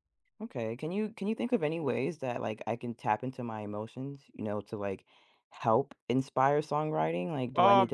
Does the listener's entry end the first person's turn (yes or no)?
yes